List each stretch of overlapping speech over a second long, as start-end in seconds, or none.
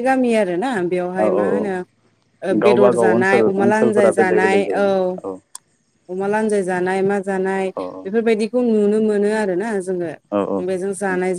2.7-4.9